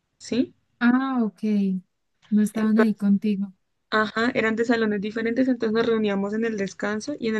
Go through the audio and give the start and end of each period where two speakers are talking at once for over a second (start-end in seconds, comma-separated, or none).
none